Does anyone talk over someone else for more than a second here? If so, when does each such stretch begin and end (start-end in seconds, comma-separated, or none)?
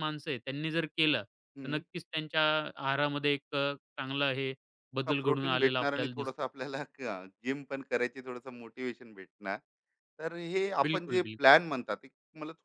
5.1-6.4